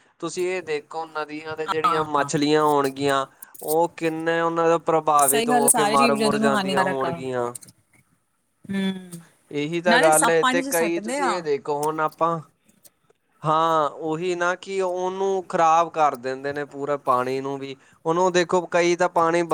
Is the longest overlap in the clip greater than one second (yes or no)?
yes